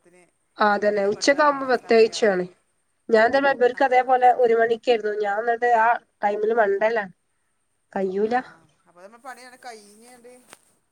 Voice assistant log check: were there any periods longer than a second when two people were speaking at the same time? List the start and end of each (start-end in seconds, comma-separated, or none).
0.9-2.4